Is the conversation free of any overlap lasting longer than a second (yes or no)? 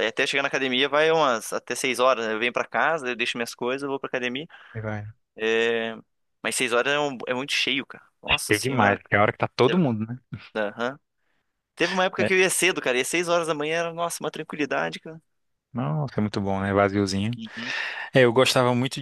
yes